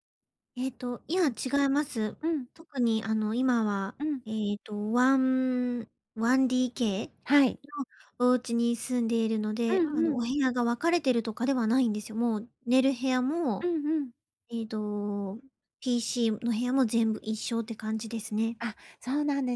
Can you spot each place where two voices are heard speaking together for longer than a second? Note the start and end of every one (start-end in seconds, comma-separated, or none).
none